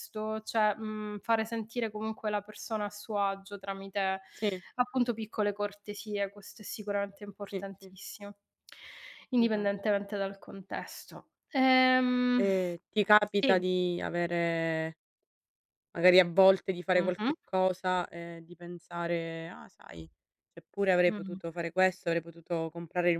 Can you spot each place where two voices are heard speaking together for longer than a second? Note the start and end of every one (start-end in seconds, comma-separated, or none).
none